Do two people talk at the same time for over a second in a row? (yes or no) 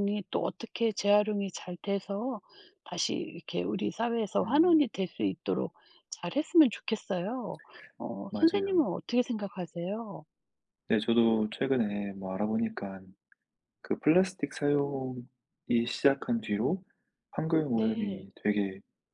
no